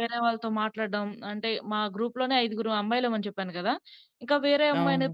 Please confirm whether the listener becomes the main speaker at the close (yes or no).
no